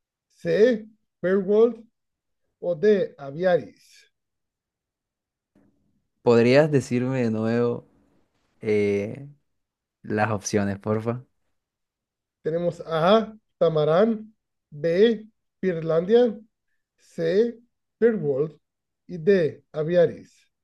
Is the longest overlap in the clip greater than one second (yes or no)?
no